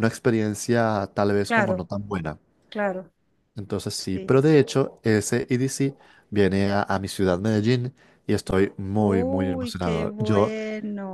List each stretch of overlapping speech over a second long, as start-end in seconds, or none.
9.0-10.5